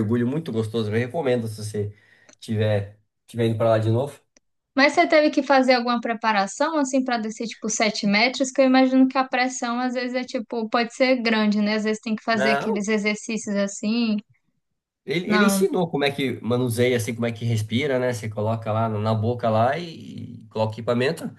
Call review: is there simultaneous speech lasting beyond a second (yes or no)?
no